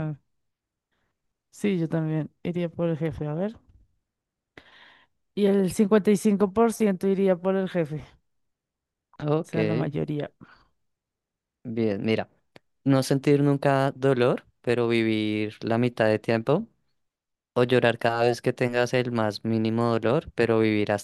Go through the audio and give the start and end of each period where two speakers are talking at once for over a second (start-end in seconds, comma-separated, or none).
none